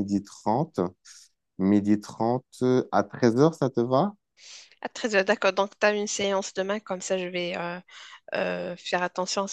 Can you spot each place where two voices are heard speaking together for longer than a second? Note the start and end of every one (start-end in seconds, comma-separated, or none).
none